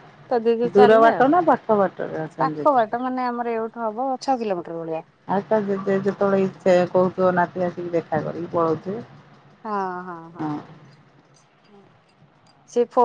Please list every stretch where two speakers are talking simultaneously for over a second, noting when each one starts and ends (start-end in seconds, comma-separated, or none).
none